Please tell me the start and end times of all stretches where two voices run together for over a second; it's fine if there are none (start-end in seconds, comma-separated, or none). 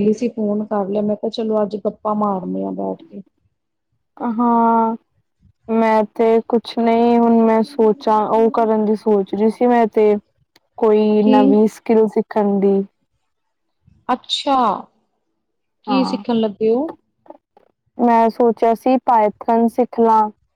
none